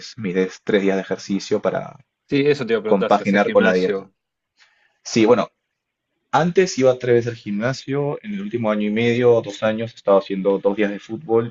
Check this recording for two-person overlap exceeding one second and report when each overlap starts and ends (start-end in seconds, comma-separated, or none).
2.9-4.1